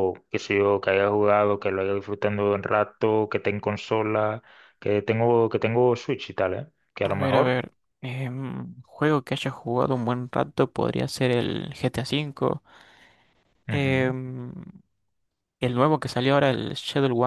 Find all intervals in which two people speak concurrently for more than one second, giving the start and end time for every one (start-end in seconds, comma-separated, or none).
none